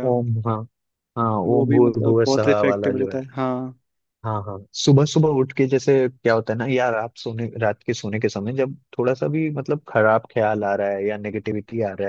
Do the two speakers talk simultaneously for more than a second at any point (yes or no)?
yes